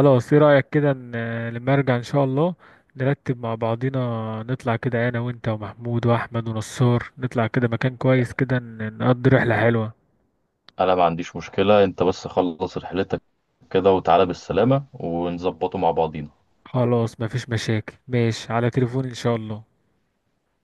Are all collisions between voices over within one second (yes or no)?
yes